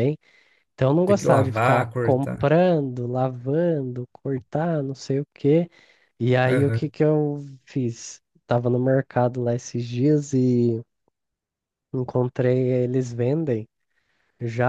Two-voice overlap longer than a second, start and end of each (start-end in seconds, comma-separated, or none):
1.1-2.5